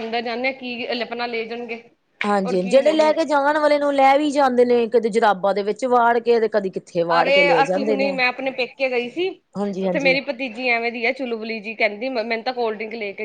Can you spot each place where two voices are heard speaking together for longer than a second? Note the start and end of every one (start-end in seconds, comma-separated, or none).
none